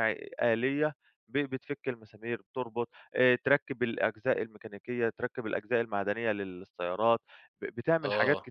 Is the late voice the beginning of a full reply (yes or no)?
no